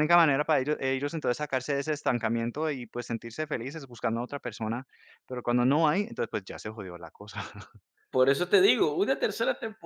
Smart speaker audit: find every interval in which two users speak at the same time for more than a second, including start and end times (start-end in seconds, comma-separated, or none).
none